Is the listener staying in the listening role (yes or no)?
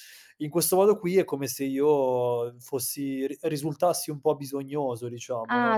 no